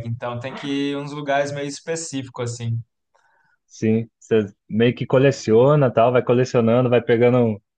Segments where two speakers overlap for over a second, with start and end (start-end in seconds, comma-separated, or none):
none